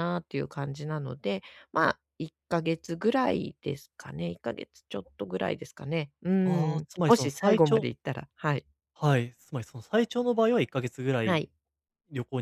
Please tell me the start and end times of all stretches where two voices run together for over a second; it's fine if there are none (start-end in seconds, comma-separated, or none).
6.4-7.9